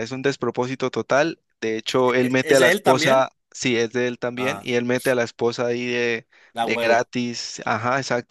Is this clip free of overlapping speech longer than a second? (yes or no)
no